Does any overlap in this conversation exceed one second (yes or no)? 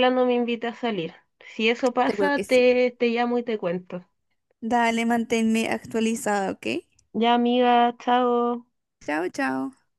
no